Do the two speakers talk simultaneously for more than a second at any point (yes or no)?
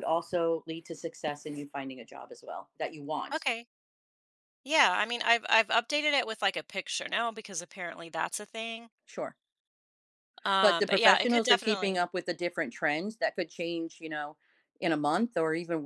yes